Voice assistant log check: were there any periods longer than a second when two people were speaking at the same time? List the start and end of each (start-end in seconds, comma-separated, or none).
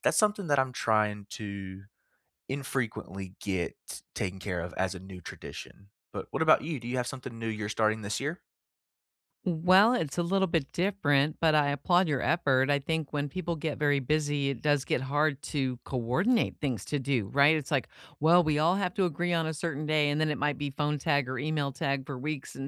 none